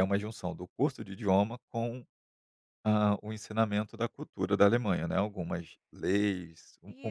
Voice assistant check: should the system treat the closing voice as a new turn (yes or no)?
yes